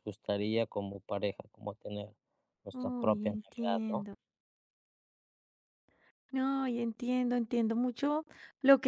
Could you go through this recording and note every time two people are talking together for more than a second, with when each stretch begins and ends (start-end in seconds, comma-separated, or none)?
2.7-4.1